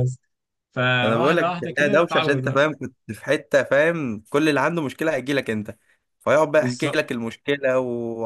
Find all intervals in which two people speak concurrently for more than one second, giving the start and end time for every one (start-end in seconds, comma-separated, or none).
1.0-2.6